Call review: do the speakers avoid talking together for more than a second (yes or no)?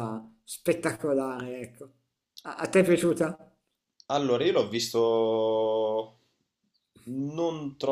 yes